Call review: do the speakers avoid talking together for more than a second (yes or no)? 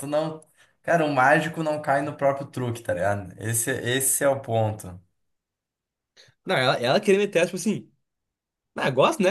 yes